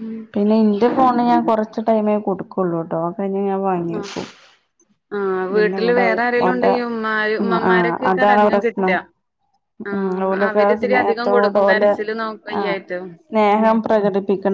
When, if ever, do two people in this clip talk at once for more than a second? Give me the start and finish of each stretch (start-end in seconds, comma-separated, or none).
5.5-8.9, 9.9-11.9